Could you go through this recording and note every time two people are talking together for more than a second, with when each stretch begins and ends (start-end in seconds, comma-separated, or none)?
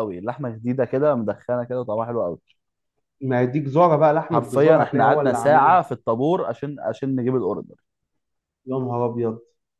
4.3-5.8